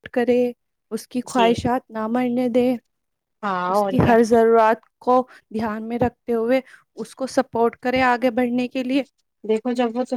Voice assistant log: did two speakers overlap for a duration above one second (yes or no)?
no